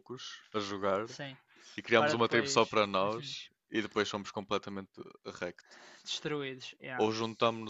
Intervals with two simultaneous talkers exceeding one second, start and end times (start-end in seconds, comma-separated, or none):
2.0-3.3